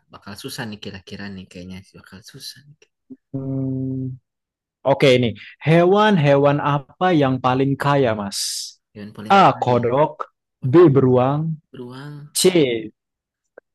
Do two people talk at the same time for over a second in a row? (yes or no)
no